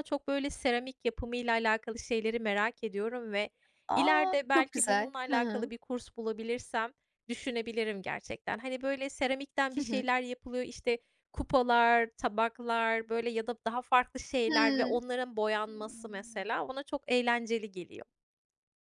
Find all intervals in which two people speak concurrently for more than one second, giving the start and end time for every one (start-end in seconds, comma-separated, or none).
3.9-5.7